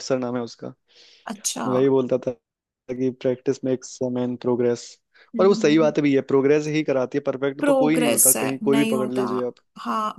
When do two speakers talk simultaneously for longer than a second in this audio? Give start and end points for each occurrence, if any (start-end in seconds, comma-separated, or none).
7.6-9.2